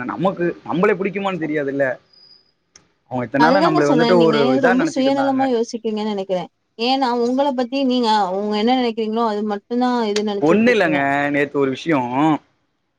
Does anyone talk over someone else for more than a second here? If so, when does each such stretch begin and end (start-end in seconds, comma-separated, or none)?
3.4-5.4